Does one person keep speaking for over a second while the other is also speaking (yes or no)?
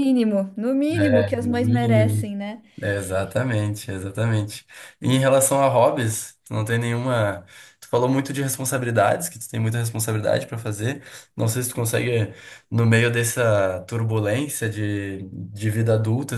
yes